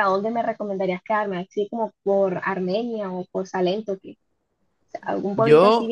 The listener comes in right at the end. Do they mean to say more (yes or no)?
no